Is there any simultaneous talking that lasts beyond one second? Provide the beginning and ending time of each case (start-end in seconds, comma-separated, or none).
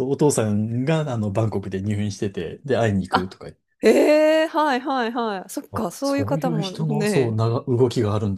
5.7-7.4